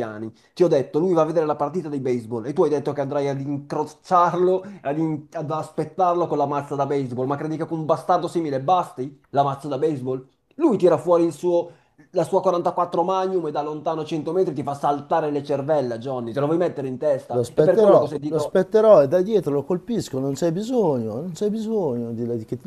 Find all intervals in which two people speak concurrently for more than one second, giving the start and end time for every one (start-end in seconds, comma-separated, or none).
17.3-18.6